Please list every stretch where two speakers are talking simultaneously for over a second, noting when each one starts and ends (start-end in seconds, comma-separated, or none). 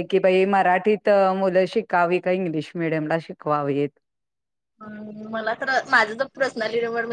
none